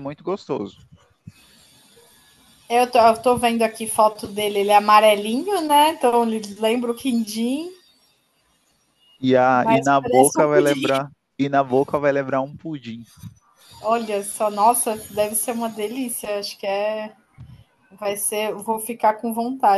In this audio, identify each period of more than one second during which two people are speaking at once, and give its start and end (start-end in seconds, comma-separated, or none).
9.5-10.9